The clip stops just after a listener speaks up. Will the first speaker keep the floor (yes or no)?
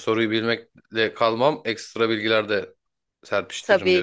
no